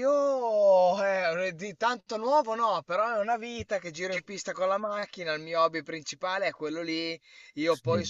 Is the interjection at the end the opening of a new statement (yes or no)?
no